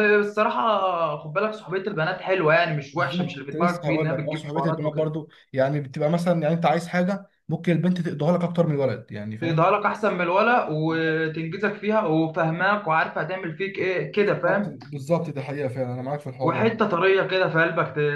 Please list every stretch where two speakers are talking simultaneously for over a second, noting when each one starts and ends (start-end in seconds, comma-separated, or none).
2.9-5.1